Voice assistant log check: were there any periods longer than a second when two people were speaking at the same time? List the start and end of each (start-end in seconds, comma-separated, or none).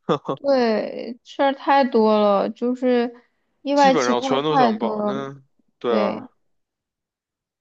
3.7-5.2